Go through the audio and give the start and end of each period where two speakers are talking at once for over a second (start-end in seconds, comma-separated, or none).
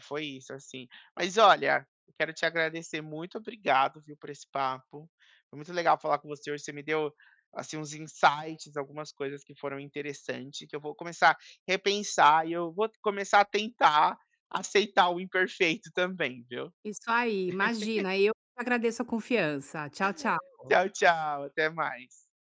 none